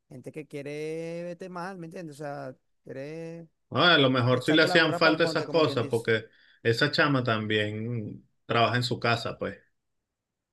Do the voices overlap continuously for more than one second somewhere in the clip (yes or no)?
yes